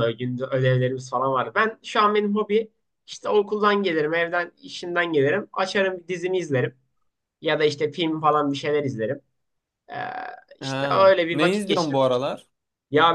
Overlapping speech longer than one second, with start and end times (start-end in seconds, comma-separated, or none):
10.6-12.0